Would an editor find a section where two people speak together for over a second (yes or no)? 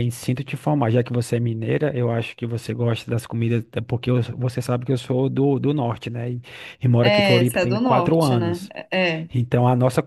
yes